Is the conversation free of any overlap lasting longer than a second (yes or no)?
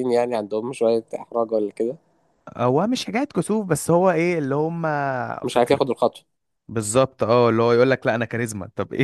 yes